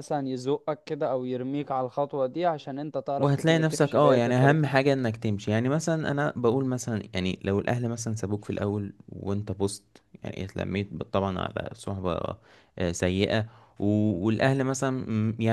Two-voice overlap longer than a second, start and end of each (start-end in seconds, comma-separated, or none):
3.2-4.6